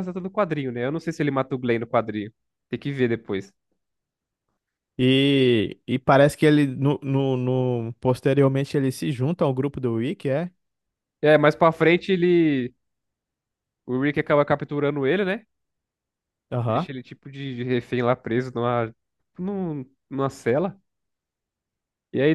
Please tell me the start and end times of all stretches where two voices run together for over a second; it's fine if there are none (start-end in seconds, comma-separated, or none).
none